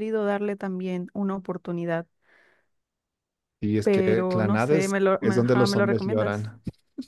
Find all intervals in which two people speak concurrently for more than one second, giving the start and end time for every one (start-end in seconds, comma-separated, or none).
3.8-6.5